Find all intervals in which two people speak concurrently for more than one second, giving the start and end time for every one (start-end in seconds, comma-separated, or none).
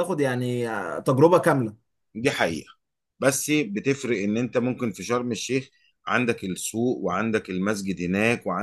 none